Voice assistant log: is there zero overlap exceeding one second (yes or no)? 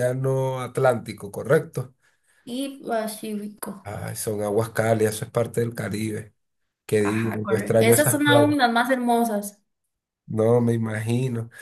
no